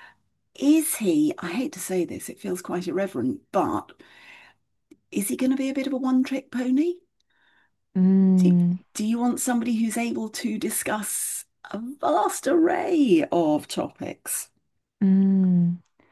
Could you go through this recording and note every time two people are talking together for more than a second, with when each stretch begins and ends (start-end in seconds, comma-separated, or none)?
none